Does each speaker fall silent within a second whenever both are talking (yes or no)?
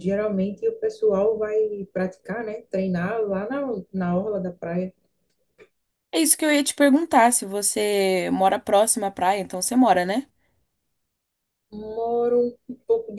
yes